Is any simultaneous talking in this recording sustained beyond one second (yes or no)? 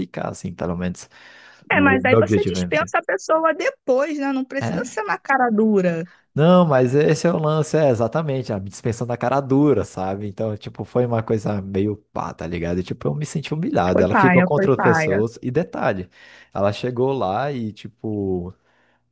yes